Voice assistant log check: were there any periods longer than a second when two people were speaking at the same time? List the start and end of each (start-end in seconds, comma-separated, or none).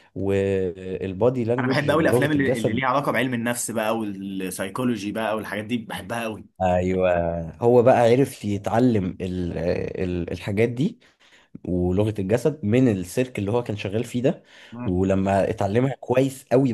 1.6-2.8